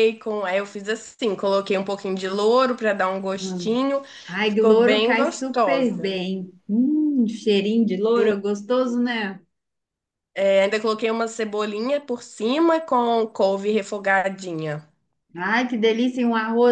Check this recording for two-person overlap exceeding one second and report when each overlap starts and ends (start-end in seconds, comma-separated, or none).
4.4-6.2